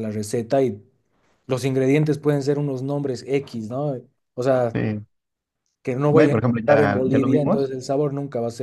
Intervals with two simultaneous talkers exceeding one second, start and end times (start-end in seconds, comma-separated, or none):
6.1-7.7